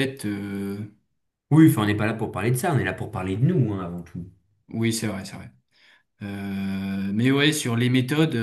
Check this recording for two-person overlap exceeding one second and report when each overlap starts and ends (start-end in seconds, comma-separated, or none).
none